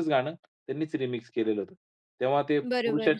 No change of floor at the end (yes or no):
yes